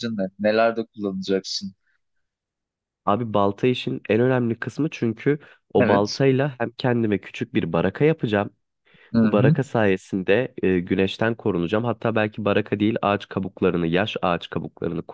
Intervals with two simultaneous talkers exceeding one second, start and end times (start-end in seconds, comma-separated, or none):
none